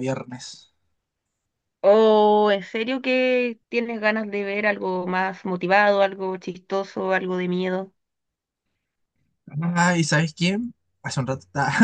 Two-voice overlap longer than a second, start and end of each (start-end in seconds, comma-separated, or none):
none